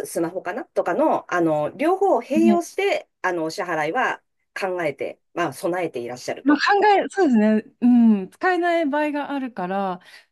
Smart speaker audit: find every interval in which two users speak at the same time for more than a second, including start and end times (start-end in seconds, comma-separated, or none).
none